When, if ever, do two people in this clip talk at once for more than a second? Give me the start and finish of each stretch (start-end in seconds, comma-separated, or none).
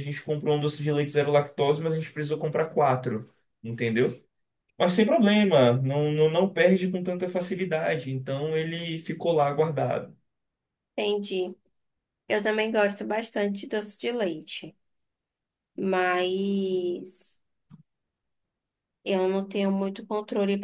none